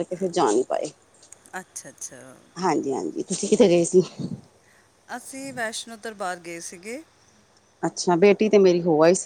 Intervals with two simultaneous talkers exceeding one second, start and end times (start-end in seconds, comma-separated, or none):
none